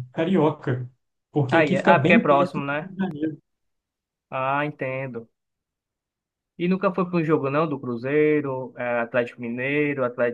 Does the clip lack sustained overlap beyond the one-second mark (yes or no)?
no